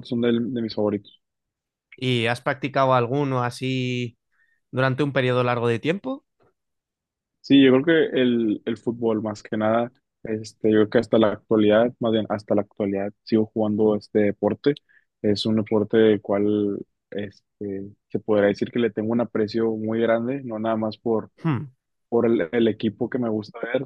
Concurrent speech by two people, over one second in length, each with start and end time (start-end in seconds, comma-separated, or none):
none